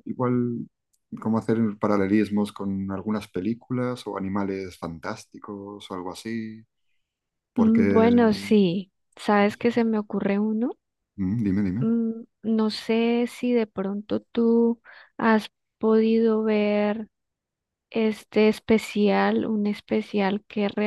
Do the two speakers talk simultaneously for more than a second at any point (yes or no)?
yes